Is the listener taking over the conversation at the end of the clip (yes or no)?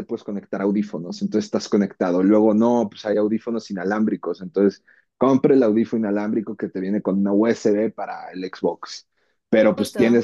no